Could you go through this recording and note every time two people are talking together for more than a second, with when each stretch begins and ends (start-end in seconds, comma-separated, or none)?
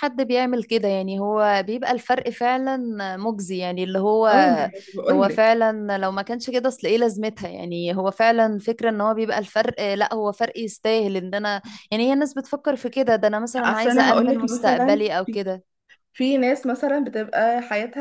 13.6-15.4